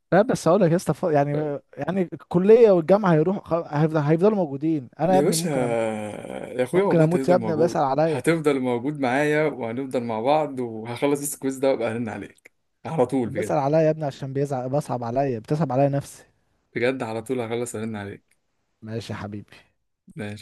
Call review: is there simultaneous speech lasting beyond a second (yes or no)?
yes